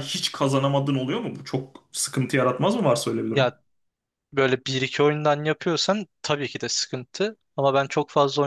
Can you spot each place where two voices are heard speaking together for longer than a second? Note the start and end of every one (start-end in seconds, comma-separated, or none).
none